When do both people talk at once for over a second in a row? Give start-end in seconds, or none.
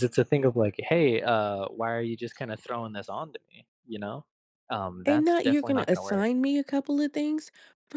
5.0-6.3